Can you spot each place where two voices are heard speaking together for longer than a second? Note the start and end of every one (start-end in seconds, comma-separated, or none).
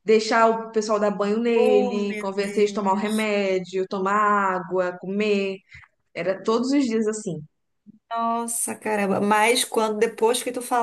1.5-3.3